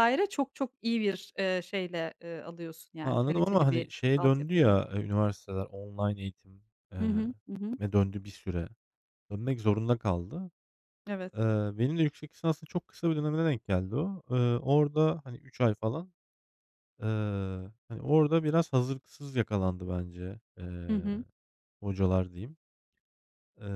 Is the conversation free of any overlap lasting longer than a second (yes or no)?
no